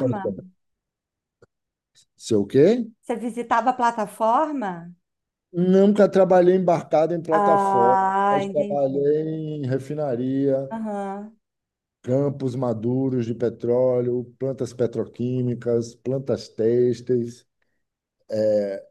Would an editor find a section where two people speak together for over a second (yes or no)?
yes